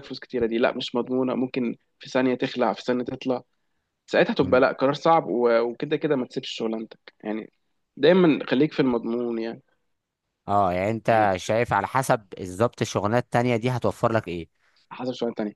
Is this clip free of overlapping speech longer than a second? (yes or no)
yes